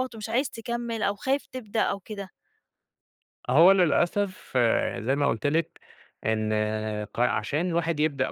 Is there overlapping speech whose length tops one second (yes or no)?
no